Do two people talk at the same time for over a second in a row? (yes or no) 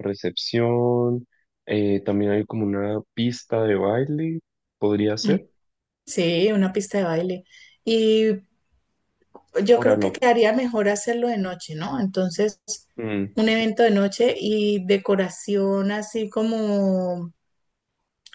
no